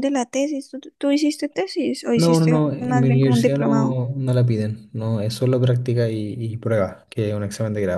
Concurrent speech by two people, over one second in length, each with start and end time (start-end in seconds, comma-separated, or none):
2.1-4.0